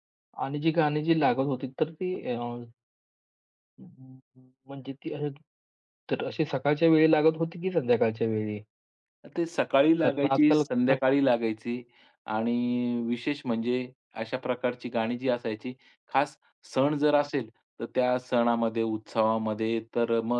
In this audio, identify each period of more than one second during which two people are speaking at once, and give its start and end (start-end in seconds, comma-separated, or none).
10.0-11.8